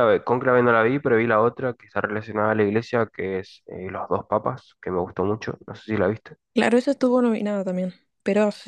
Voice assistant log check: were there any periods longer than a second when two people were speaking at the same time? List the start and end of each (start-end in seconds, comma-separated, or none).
none